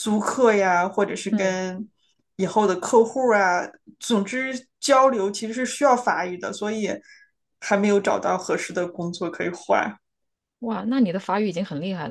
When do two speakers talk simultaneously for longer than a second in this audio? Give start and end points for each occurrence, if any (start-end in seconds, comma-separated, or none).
none